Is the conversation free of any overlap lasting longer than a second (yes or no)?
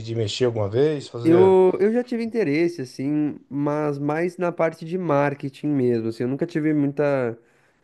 yes